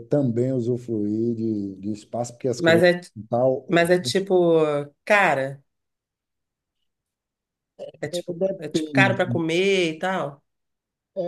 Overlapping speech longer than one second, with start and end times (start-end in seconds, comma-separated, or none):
8.1-9.4